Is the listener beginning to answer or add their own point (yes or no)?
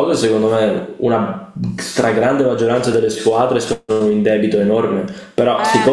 no